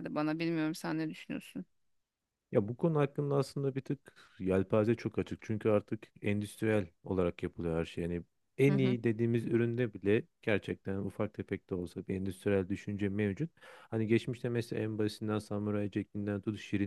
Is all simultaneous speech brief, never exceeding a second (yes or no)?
yes